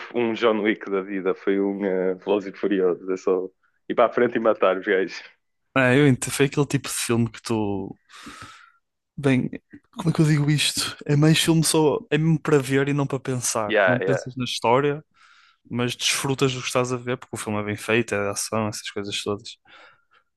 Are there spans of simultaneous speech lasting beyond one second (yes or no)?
no